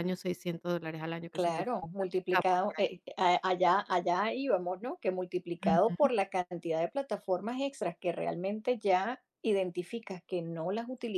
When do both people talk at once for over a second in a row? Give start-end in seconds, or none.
1.3-2.9